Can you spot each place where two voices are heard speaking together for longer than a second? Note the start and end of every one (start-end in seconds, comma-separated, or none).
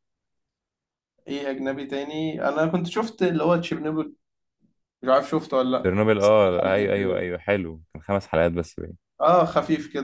5.8-7.3